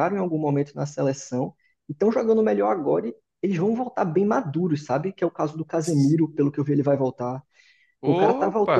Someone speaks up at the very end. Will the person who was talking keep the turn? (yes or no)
yes